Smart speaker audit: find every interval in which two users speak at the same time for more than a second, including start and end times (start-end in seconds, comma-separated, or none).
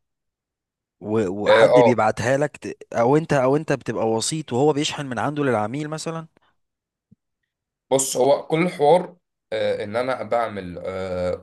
none